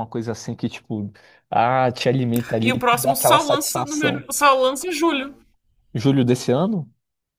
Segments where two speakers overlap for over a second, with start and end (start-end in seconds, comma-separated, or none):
2.6-4.3